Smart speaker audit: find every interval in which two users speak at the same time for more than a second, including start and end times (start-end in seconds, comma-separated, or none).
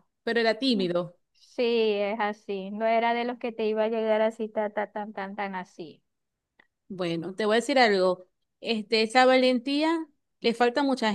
none